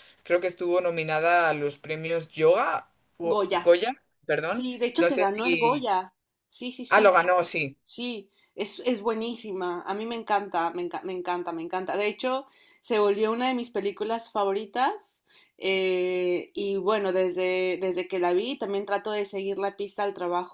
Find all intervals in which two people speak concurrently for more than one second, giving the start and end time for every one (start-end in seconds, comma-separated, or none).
4.5-5.9